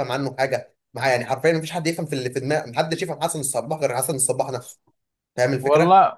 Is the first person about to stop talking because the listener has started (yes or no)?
yes